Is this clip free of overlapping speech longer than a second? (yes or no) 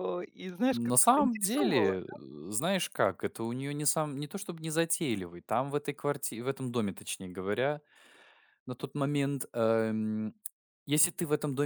no